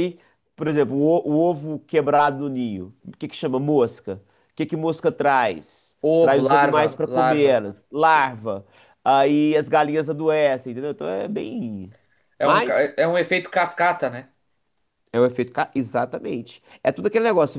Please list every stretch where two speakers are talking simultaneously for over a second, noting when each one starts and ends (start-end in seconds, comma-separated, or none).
6.0-7.6